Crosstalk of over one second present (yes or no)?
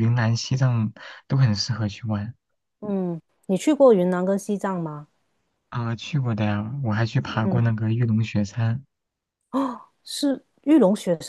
no